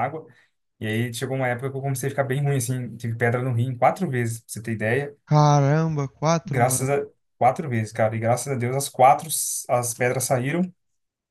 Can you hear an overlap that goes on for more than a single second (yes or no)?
no